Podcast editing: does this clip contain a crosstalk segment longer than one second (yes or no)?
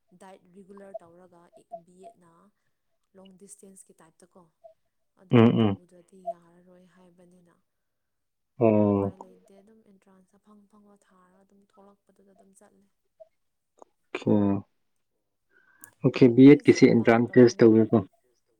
yes